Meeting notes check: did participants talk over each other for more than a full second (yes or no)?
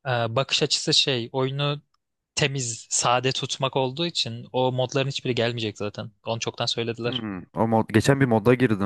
no